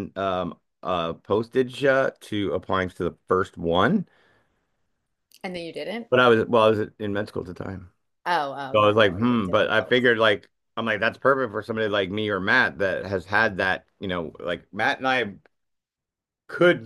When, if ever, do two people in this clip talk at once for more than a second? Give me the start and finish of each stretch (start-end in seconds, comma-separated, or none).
8.7-9.9